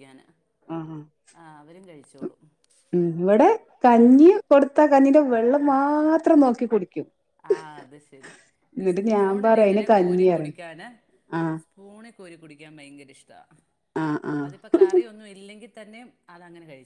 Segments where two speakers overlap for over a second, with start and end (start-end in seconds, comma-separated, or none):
8.8-10.5